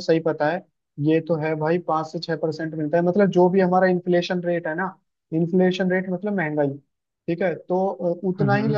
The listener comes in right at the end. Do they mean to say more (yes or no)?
no